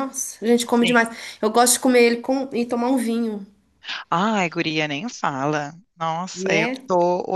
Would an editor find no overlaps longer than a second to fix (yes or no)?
yes